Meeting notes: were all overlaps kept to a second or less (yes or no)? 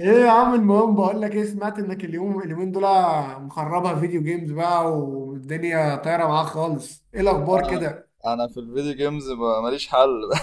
yes